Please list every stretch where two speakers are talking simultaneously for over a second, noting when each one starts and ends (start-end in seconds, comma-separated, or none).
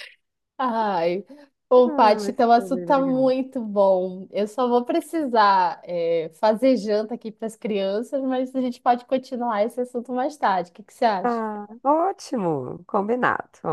1.8-3.3